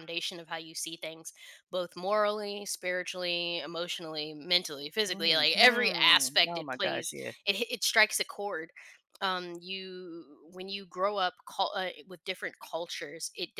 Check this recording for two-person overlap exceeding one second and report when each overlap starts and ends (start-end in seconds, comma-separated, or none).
5.1-7.3